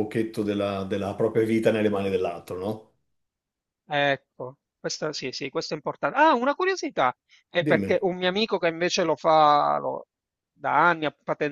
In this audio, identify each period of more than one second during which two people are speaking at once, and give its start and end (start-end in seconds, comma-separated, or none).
none